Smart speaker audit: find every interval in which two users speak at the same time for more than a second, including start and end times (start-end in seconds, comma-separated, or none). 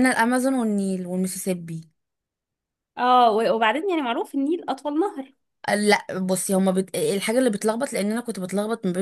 none